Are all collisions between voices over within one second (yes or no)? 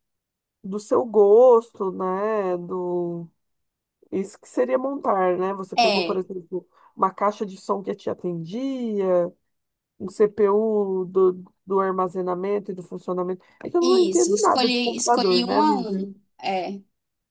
no